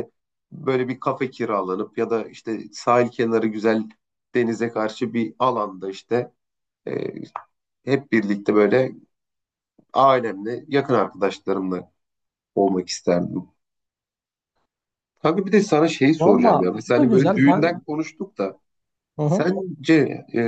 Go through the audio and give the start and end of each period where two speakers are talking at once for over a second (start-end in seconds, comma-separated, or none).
16.2-17.8